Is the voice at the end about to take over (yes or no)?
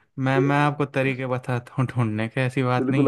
yes